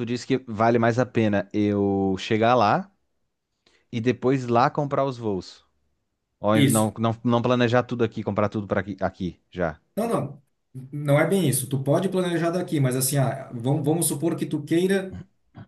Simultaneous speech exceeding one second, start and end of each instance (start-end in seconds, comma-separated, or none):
none